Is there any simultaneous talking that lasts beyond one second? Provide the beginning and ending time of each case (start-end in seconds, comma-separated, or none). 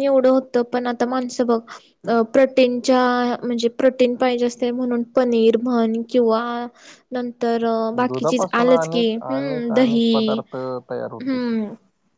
8.0-10.4